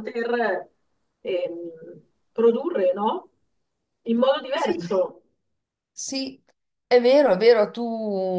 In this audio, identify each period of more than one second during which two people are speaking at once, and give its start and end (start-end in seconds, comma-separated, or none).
none